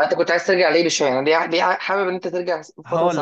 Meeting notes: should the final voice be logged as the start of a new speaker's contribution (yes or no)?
yes